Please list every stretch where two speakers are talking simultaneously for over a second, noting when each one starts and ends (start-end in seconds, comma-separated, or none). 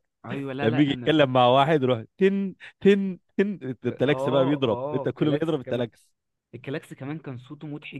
3.8-5.8